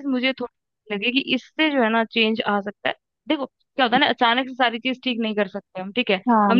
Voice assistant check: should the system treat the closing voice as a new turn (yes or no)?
no